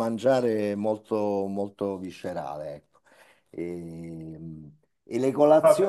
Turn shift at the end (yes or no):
no